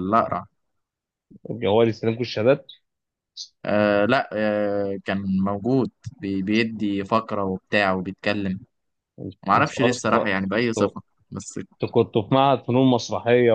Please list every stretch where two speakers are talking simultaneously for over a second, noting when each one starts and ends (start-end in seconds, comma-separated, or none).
9.6-10.9